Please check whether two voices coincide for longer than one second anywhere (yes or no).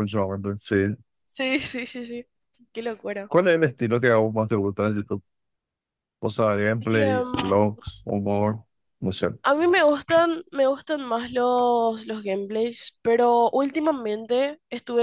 no